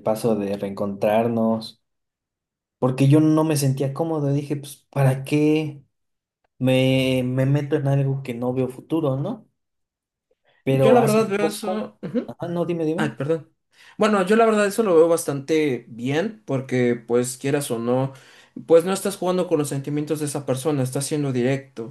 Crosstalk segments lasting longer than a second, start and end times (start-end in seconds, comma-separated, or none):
10.7-12.0